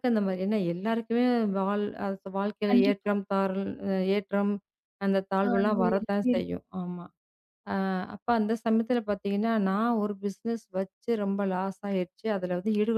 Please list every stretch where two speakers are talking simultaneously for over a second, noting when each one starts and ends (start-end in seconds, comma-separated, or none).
5.4-6.6